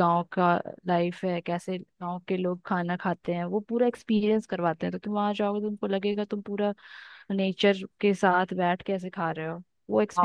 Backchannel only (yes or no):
no